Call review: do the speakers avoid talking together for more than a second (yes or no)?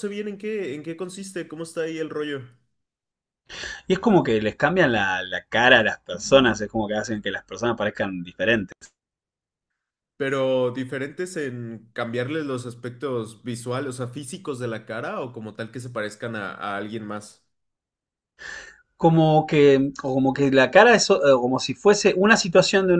yes